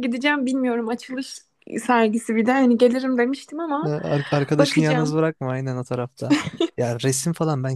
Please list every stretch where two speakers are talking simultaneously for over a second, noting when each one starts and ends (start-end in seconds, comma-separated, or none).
none